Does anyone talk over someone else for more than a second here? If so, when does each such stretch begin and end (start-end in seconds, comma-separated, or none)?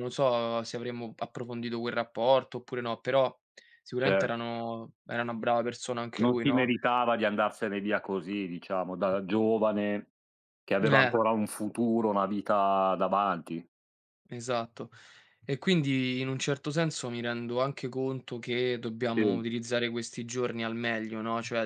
none